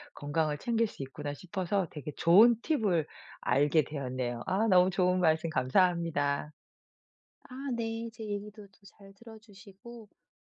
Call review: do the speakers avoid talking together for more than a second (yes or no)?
yes